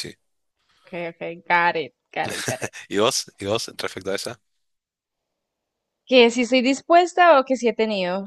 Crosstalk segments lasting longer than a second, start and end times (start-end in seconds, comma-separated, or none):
none